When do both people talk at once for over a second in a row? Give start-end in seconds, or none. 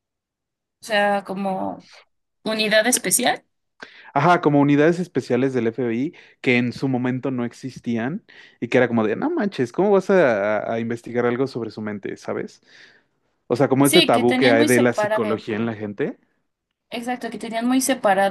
13.8-15.4